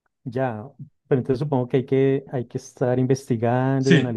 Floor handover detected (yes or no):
no